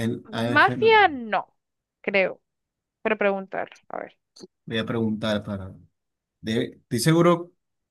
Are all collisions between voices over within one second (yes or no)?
yes